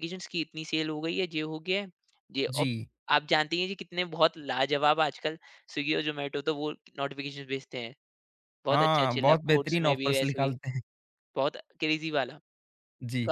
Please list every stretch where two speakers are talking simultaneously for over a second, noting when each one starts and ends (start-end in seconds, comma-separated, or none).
8.7-10.6